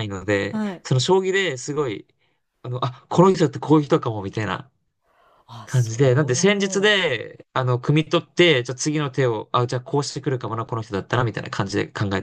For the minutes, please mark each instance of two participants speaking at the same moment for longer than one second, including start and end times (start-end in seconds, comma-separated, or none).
5.6-6.9